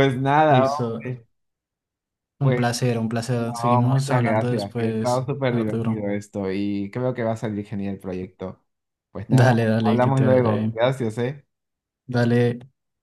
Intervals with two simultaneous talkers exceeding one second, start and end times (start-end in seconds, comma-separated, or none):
3.4-6.1, 9.3-10.8